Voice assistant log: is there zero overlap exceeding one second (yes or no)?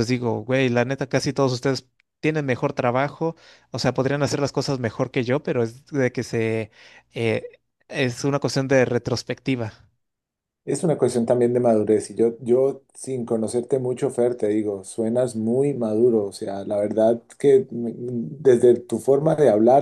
yes